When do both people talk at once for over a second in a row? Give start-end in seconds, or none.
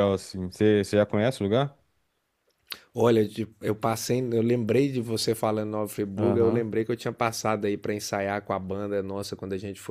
none